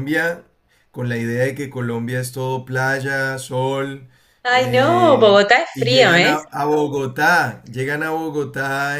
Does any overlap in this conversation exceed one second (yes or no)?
yes